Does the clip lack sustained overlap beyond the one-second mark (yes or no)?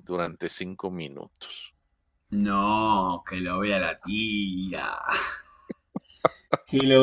yes